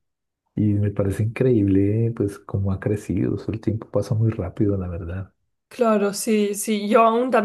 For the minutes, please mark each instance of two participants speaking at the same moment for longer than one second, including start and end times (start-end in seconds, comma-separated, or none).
none